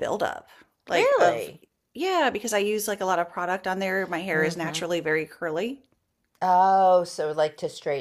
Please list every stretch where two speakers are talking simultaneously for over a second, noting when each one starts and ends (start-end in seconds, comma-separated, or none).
none